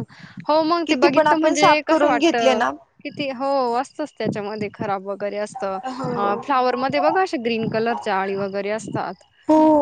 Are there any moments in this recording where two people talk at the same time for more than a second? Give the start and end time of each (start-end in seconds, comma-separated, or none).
0.9-2.6